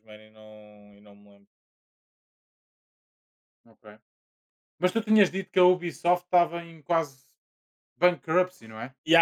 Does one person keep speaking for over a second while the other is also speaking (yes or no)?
no